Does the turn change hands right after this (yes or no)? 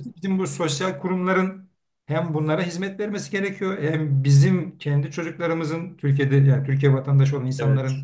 no